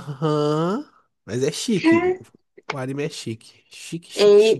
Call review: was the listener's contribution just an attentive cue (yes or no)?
no